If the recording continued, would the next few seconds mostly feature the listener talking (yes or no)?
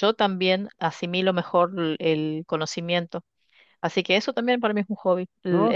yes